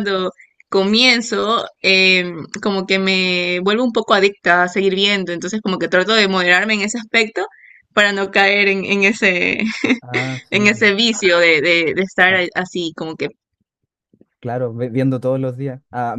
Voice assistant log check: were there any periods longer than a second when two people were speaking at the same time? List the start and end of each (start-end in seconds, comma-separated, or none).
none